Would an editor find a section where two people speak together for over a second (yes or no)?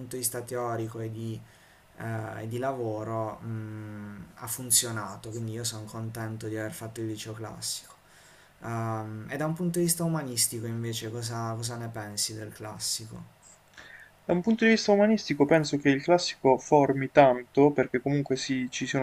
no